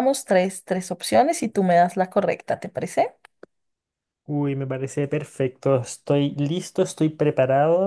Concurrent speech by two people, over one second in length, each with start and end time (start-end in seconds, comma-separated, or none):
none